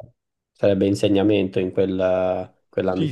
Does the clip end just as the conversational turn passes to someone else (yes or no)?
yes